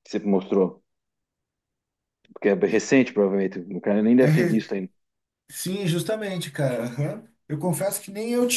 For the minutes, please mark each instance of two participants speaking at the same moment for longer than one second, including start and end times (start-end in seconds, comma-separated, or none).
none